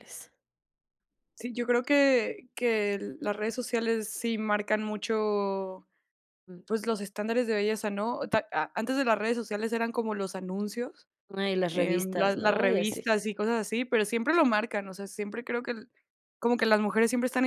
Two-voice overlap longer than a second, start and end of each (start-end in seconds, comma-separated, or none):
11.7-13.1